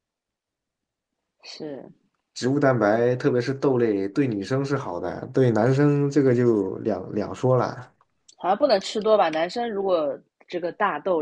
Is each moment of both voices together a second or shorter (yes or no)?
yes